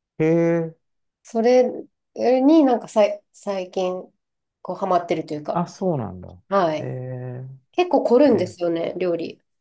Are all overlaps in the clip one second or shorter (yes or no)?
yes